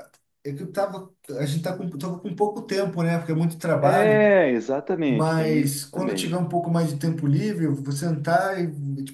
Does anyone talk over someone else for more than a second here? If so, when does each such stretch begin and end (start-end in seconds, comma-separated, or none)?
5.1-6.4